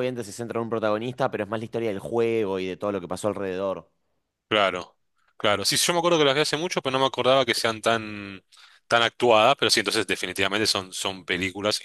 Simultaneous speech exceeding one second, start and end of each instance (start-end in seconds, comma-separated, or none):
none